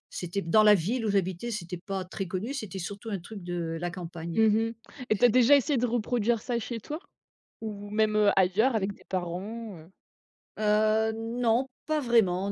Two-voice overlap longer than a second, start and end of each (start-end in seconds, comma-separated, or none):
none